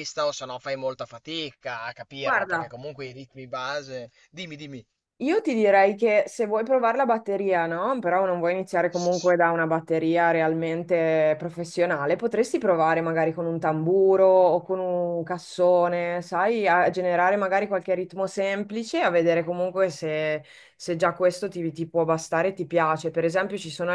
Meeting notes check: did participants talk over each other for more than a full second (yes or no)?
no